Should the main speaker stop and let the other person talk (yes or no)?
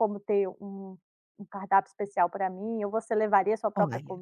yes